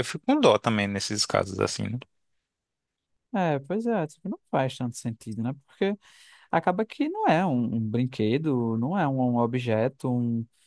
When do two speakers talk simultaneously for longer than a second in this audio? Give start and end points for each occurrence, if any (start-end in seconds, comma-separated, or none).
none